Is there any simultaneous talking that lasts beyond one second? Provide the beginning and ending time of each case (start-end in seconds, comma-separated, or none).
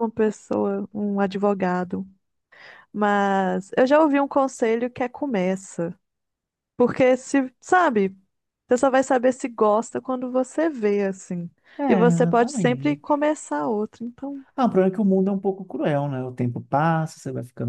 11.9-13.2